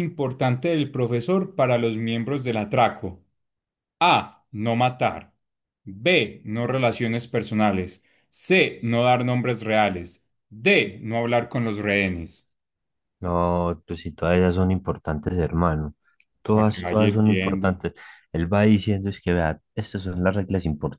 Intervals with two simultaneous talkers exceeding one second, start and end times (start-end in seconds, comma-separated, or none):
16.5-17.8